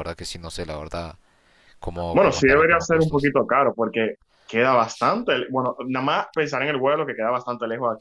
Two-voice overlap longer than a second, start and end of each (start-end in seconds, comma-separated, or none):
2.1-3.3